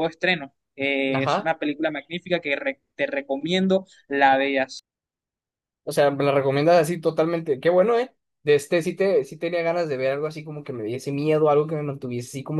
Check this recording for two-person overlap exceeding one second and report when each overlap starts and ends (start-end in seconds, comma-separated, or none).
none